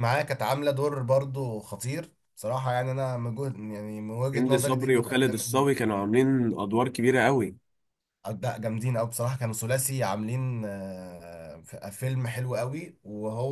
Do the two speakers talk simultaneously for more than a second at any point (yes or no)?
yes